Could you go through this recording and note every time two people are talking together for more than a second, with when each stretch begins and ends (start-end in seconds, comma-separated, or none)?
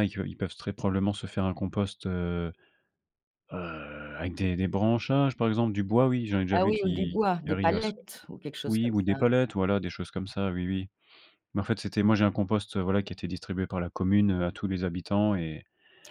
6.5-7.9